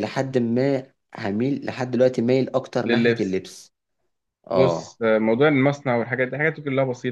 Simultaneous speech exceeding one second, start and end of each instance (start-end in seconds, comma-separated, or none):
none